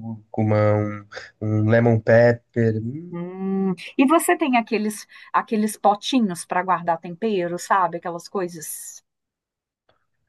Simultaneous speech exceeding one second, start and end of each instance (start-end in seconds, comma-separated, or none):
none